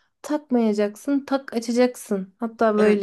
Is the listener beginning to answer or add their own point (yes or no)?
yes